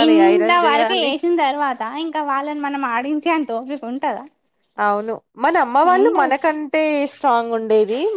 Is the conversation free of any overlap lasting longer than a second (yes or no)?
yes